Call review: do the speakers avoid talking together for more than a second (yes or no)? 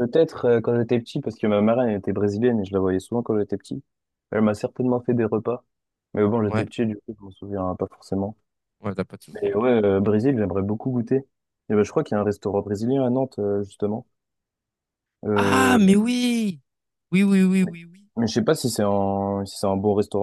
yes